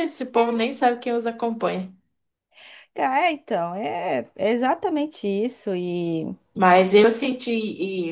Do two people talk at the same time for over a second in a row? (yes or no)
no